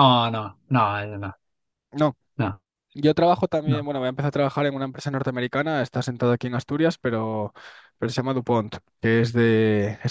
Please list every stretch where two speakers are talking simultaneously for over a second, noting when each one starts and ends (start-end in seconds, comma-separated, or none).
none